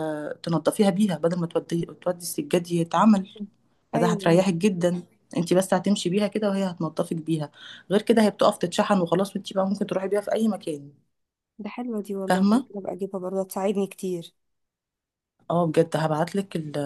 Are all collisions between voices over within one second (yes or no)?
yes